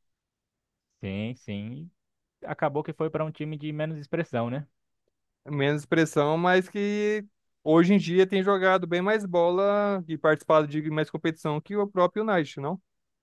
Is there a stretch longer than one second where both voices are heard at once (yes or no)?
no